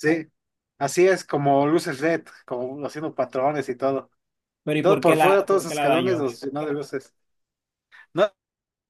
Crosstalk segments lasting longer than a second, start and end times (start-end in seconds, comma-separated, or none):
4.8-6.3